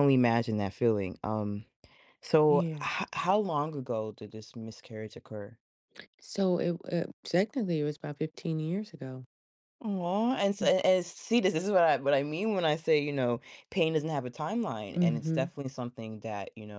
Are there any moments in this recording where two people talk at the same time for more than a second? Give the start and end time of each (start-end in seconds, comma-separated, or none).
none